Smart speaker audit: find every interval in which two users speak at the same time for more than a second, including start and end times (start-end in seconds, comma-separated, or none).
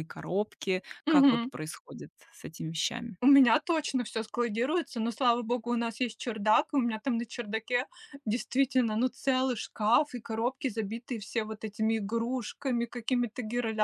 none